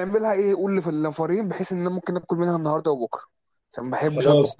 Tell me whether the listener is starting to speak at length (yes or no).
yes